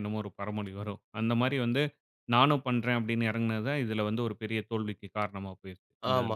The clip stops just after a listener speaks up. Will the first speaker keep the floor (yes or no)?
no